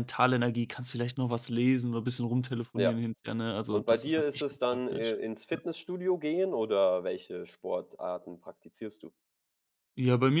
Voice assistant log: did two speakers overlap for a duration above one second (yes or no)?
yes